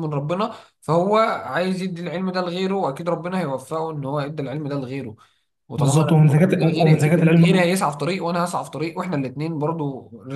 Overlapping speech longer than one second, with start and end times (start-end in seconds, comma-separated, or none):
5.8-7.7